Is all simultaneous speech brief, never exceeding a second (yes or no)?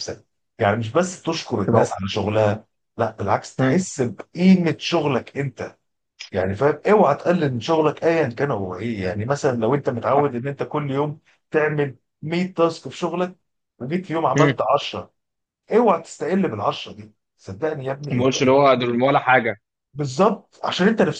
yes